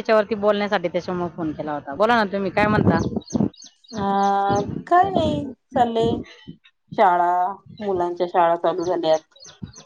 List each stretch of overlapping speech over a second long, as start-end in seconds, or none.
none